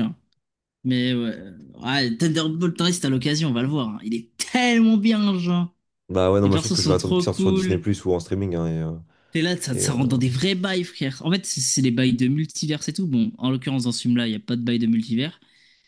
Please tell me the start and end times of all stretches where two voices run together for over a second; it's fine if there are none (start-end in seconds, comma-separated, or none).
6.4-7.8